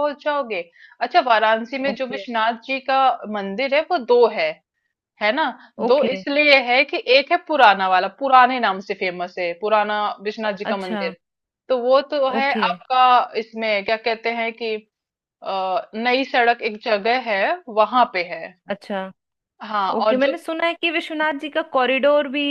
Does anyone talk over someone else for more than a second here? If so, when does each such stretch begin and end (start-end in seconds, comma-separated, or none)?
none